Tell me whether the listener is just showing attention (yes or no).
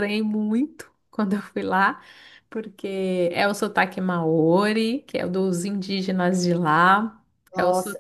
no